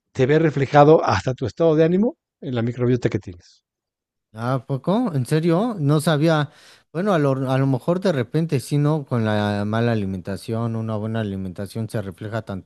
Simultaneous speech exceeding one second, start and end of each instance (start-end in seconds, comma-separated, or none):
none